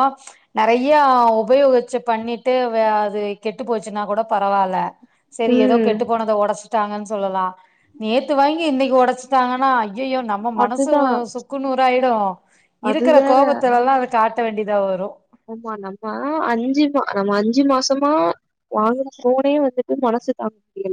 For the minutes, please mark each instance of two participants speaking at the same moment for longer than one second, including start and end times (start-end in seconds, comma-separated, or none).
none